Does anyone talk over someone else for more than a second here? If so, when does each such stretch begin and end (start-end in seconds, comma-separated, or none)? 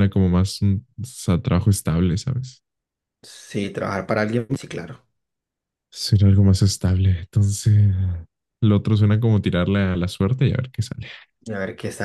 none